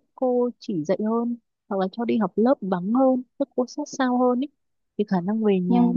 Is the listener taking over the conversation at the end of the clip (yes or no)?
no